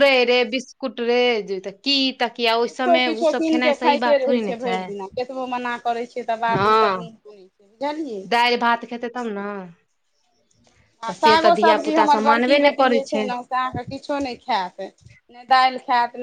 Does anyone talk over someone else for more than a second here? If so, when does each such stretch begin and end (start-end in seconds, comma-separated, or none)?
11.1-13.0